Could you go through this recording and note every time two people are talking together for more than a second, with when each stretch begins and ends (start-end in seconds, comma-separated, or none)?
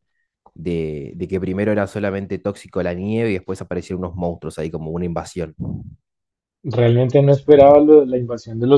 none